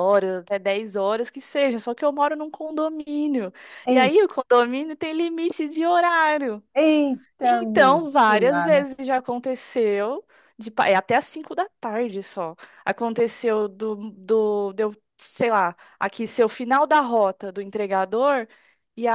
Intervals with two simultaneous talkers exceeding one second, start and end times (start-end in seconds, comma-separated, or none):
7.4-8.9